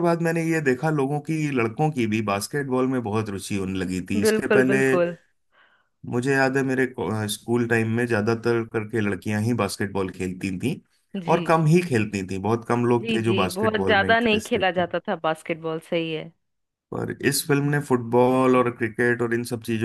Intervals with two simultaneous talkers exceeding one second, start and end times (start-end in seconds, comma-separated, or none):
13.0-14.8